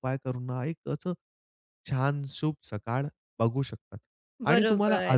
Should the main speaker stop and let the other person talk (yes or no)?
no